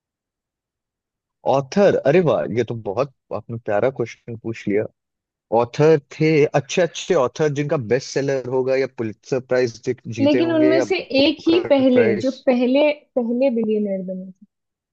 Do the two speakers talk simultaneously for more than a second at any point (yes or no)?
yes